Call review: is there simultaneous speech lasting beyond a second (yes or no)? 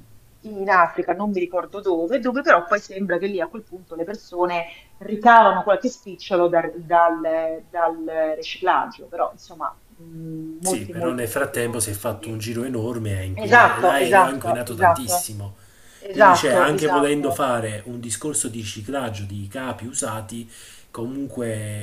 yes